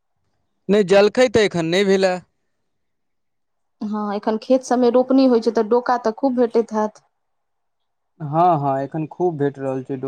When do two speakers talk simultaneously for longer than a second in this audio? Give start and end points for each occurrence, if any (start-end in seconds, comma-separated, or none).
none